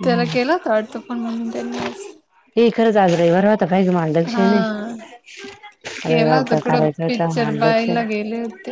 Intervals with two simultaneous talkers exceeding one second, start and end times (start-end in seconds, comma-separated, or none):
6.0-7.8